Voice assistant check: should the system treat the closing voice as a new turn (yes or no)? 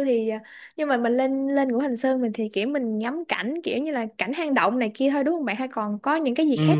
yes